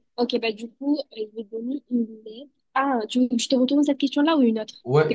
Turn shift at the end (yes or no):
yes